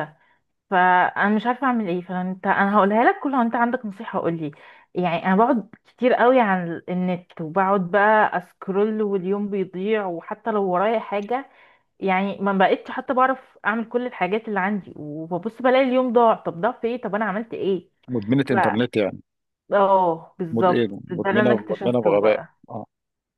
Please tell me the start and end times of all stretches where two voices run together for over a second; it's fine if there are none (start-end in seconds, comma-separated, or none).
20.5-22.5